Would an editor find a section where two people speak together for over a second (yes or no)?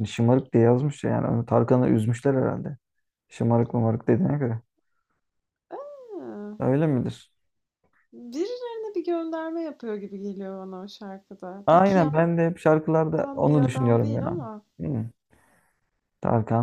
yes